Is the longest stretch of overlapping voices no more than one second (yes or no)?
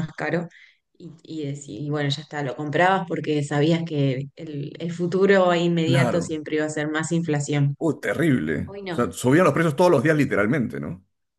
yes